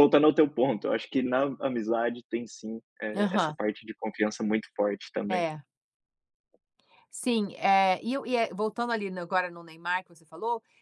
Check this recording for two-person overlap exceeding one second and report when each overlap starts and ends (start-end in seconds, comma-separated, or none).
none